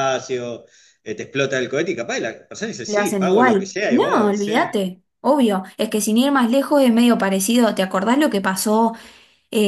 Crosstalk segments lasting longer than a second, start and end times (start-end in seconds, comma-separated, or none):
2.9-4.7